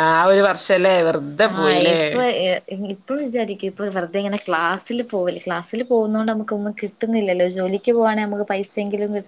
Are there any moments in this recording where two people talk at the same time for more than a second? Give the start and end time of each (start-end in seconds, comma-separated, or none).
none